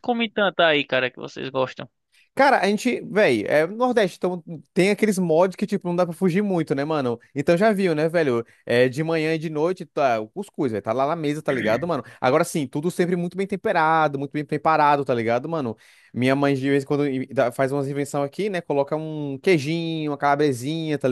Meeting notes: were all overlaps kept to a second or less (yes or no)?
yes